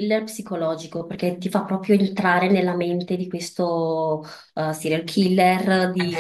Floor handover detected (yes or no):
yes